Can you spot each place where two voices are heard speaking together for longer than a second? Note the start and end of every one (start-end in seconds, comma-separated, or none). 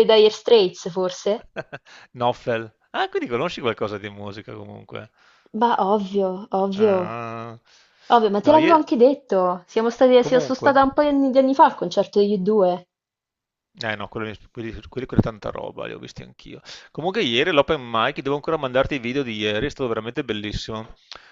none